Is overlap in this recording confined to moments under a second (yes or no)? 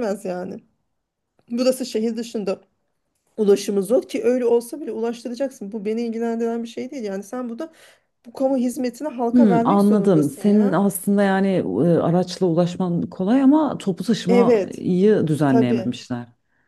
no